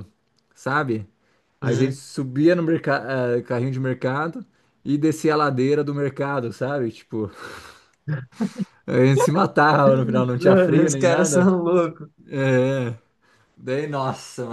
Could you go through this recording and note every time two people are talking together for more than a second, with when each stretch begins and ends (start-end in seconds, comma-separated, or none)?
10.4-11.6